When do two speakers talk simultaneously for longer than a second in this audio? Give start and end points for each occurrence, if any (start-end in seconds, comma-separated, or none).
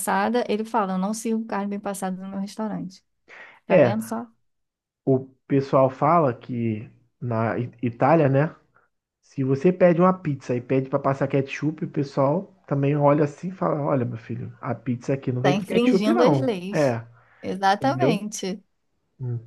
15.4-17.0